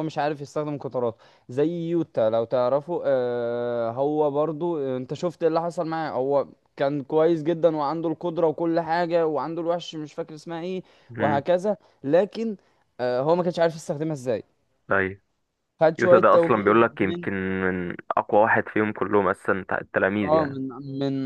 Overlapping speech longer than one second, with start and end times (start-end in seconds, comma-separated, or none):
16.0-17.3